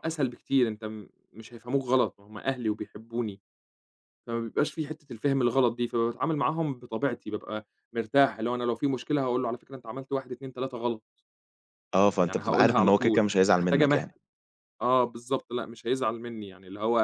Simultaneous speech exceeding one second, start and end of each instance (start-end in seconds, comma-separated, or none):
12.2-14.0